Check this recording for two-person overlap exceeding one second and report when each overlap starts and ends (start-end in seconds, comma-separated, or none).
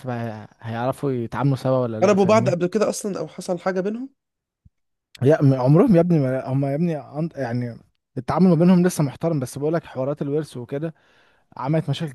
none